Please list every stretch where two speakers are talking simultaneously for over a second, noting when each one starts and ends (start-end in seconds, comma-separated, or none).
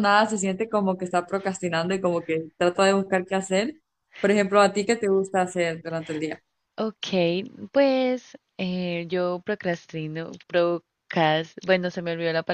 none